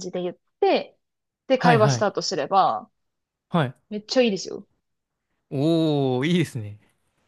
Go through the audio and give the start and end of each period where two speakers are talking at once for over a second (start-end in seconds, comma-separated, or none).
none